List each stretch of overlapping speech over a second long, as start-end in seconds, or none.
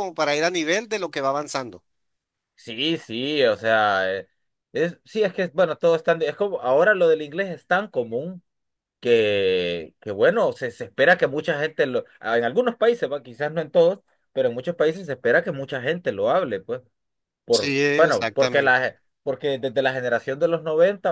17.5-18.9